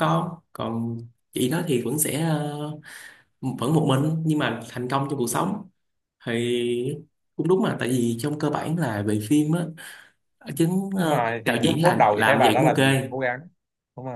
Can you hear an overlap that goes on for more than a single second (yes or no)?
yes